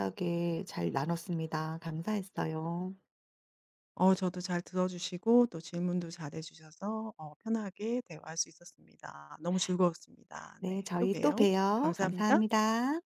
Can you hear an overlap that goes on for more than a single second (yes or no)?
yes